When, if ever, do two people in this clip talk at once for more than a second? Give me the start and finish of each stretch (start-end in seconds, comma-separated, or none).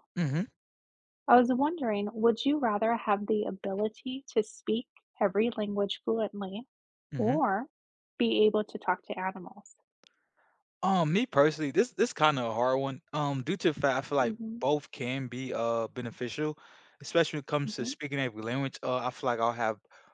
none